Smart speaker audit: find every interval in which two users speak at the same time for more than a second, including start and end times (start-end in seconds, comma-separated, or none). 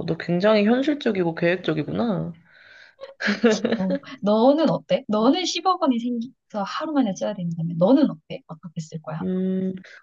none